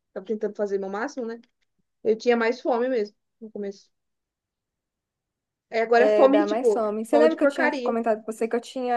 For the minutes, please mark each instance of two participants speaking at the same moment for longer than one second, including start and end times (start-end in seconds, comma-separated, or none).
6.0-8.0